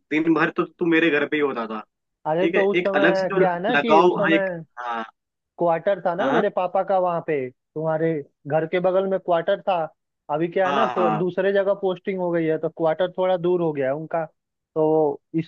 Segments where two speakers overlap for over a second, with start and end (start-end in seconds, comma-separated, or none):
2.4-4.6